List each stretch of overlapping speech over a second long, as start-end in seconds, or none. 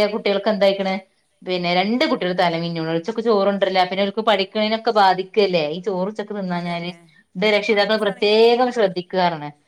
7.5-9.1